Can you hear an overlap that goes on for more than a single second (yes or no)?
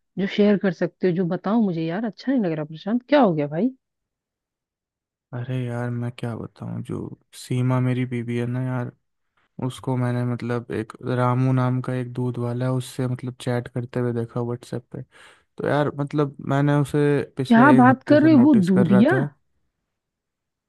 yes